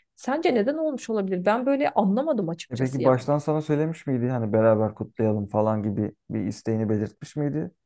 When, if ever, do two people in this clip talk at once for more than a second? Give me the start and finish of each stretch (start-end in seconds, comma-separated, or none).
none